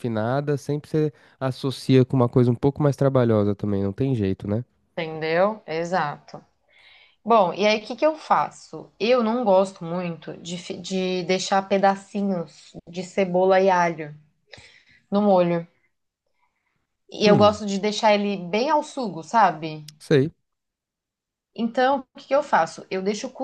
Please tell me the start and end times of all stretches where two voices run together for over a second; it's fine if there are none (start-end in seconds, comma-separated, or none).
none